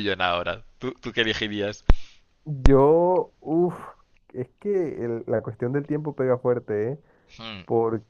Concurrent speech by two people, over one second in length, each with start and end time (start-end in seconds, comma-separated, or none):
none